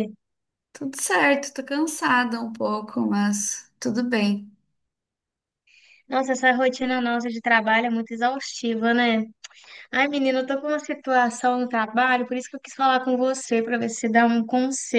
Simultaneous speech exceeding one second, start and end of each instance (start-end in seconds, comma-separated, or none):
none